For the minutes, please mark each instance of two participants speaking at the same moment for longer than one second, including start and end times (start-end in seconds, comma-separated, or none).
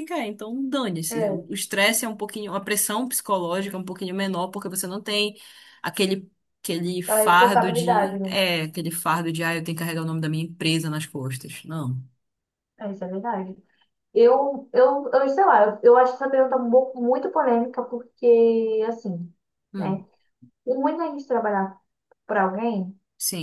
7.1-8.4